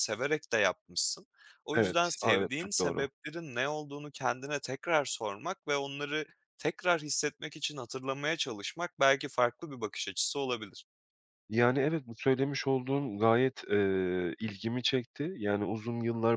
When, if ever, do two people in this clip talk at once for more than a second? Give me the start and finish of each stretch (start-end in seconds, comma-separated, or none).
1.8-3.1